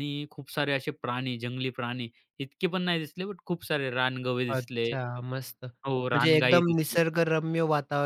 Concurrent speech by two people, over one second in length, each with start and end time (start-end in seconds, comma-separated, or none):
5.9-7.1